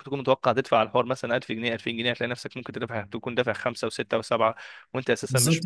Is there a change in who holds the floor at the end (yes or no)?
yes